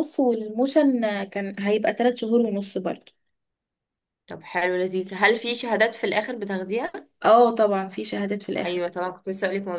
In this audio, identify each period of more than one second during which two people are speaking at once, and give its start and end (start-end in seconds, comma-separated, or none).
none